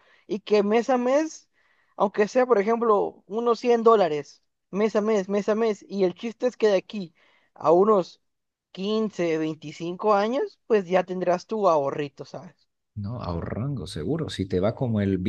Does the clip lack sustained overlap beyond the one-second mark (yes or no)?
yes